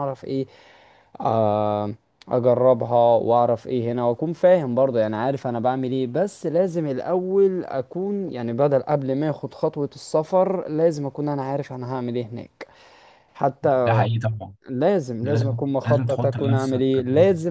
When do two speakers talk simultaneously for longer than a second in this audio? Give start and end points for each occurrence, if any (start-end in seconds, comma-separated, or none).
15.2-17.0